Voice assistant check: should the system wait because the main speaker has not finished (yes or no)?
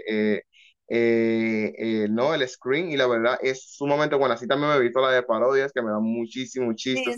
no